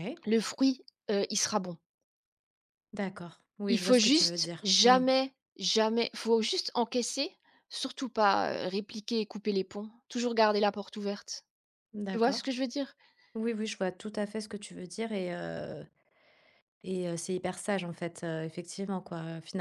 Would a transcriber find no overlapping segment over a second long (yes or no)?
no